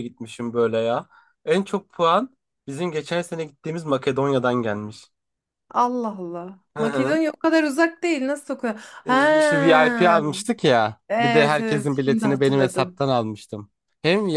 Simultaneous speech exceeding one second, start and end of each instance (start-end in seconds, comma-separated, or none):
11.1-13.0